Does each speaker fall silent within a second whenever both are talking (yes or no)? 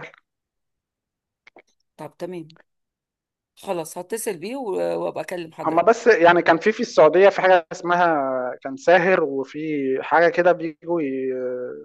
yes